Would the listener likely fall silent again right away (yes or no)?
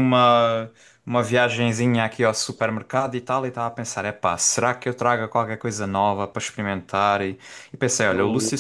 yes